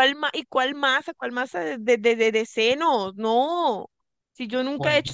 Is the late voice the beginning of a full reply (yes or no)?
no